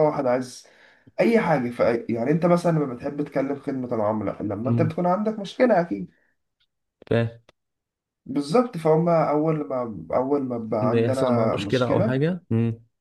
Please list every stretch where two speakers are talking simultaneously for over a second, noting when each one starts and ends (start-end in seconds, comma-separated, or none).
10.8-12.2